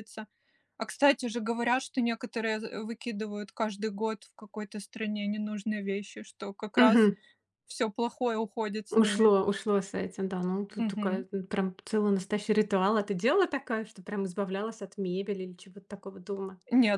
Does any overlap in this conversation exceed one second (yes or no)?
no